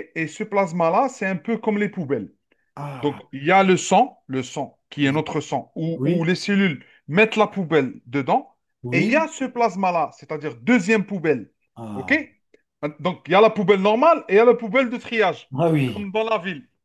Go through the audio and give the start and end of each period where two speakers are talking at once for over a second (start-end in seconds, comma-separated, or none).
none